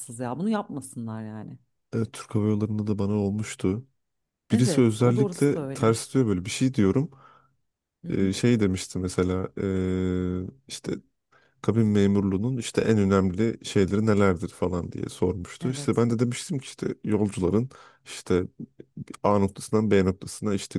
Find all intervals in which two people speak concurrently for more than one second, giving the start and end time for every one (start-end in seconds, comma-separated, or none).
4.5-6.0